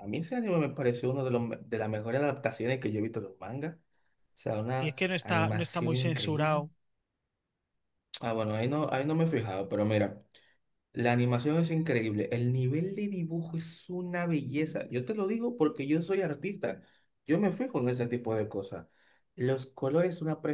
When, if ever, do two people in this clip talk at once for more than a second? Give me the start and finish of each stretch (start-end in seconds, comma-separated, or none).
4.8-6.6